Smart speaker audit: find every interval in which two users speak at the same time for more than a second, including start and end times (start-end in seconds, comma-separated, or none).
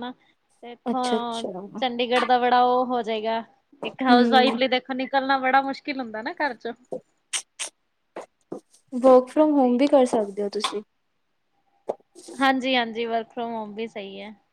none